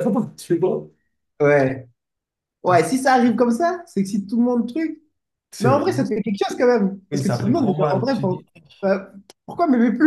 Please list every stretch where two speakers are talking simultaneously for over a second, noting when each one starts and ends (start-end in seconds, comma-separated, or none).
7.1-8.4